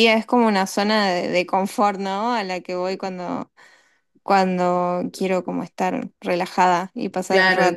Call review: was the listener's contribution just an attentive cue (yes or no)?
no